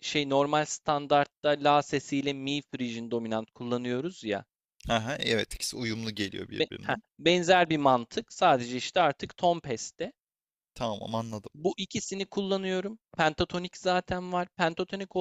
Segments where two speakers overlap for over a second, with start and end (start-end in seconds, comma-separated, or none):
none